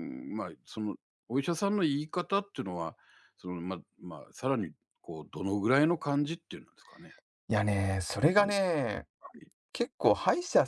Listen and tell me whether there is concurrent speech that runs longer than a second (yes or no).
no